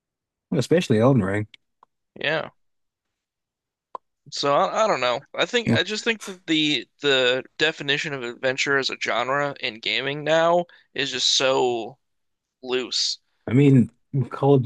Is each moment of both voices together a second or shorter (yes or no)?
yes